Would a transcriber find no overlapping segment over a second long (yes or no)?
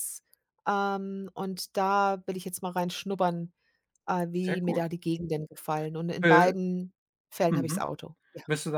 yes